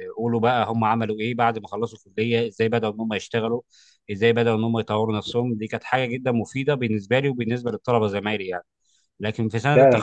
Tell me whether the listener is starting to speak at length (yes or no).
yes